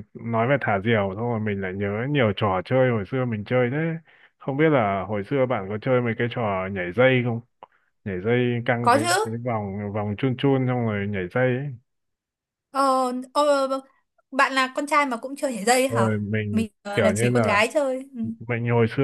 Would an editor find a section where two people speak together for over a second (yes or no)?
yes